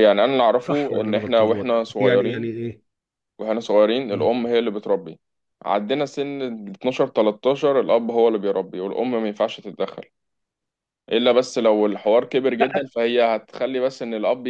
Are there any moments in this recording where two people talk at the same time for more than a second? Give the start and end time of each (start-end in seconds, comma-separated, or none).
0.7-2.5